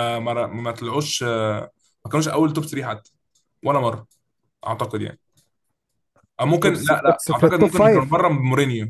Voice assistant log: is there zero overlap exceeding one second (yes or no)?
no